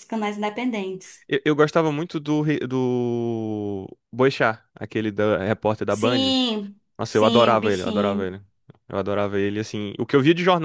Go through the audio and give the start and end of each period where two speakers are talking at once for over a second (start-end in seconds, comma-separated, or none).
7.0-8.3